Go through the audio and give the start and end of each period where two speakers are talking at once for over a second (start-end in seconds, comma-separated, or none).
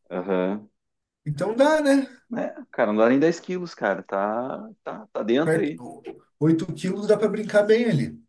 none